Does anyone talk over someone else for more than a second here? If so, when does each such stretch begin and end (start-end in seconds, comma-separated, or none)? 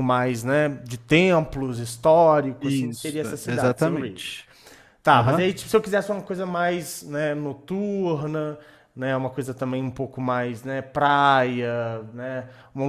2.6-4.2